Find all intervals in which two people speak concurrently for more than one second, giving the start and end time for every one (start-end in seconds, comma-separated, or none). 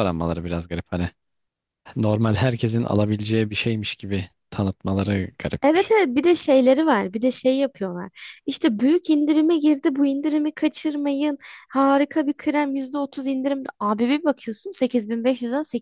none